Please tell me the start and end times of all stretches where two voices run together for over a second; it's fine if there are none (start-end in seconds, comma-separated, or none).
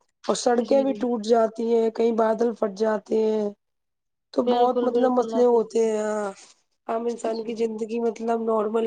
4.5-5.9